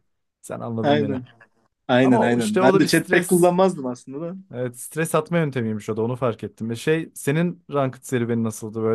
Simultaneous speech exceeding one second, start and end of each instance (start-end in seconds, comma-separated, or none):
2.0-3.5